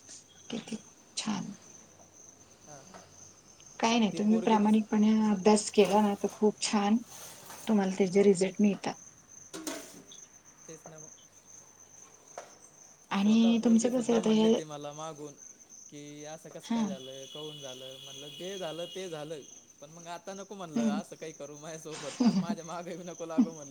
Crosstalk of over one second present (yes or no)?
yes